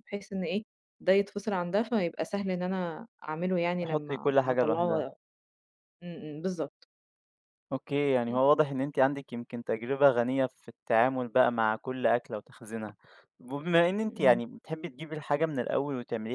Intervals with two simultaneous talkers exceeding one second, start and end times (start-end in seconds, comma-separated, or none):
3.8-5.0